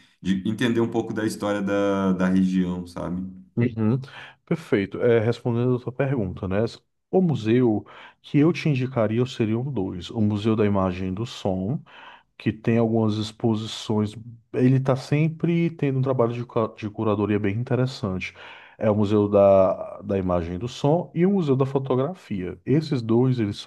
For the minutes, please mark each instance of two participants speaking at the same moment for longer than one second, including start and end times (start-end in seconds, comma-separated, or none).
none